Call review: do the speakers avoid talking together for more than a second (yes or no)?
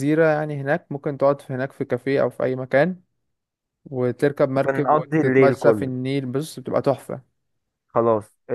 no